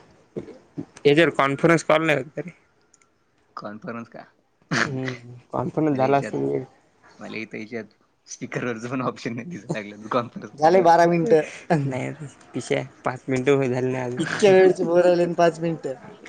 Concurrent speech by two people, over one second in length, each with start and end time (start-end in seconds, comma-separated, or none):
none